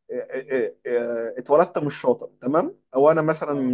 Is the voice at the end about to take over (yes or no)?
no